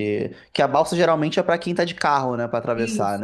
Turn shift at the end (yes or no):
no